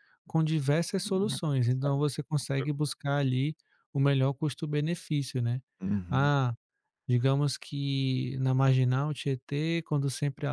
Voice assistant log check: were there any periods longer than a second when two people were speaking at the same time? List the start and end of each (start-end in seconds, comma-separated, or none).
1.0-2.7